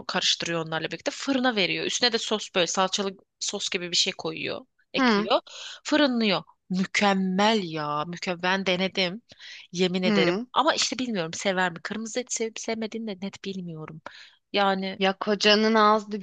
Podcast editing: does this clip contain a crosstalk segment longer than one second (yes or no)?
no